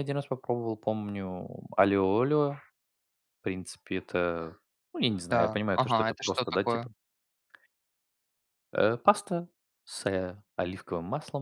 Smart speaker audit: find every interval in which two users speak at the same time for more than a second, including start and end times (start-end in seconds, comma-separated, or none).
5.3-6.9